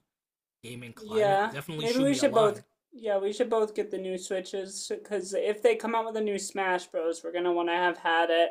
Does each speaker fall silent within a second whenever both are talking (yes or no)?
no